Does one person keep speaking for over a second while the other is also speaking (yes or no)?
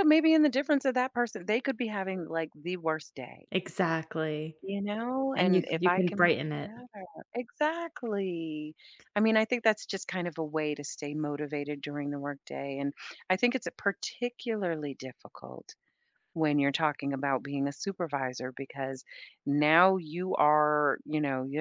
yes